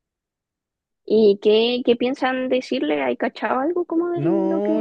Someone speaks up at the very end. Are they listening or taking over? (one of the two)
taking over